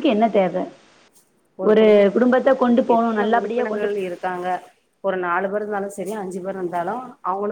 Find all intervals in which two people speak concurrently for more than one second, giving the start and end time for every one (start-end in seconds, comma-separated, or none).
2.1-3.9